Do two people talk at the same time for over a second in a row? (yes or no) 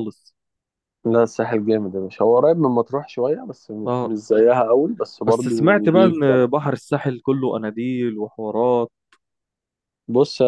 yes